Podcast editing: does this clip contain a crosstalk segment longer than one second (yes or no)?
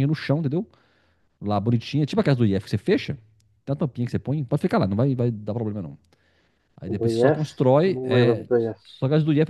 yes